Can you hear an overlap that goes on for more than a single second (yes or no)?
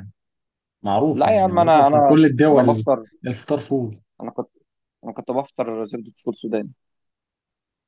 yes